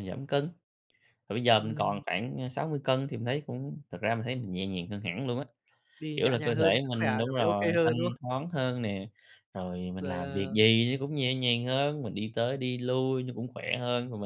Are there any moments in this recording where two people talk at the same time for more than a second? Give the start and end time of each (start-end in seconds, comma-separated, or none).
6.2-8.2